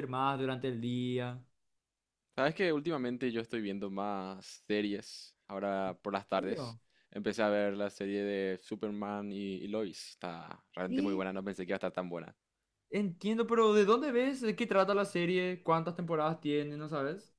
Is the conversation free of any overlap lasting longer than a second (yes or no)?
yes